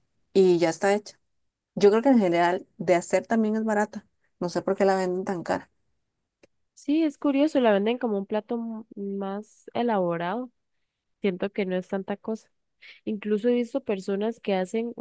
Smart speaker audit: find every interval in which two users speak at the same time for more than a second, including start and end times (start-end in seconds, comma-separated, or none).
none